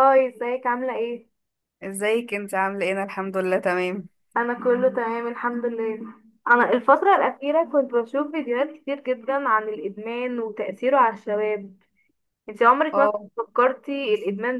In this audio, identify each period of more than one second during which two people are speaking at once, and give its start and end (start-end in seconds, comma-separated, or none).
none